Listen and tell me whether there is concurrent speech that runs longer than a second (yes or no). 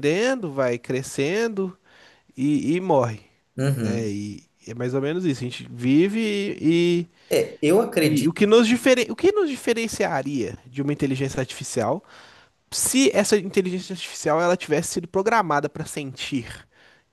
no